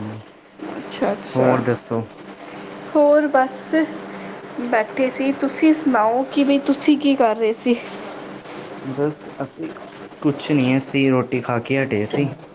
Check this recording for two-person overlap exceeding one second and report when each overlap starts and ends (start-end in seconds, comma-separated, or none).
none